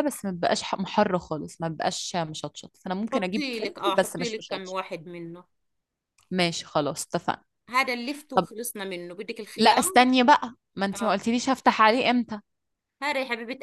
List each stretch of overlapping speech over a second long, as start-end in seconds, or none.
3.1-4.8